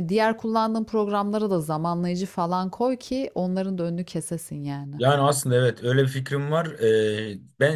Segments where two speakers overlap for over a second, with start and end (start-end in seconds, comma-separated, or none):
none